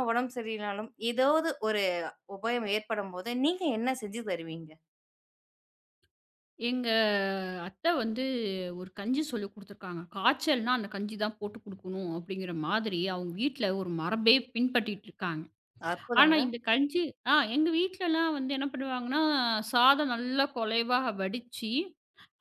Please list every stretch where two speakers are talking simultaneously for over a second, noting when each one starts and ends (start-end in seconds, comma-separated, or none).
none